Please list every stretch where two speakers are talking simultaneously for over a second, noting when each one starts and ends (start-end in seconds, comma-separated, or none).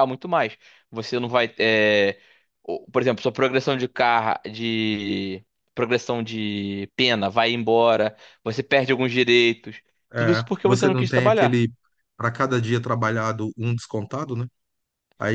10.2-11.6